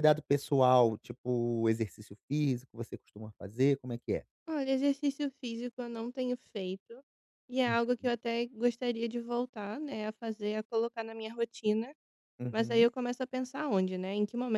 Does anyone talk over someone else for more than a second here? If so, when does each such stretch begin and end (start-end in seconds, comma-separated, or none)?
none